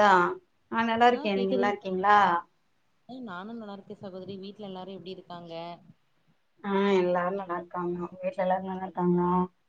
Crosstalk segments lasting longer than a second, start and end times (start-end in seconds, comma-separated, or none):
none